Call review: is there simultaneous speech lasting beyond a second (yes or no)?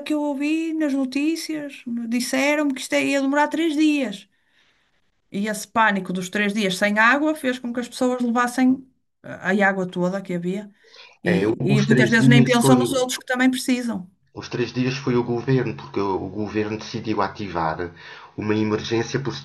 yes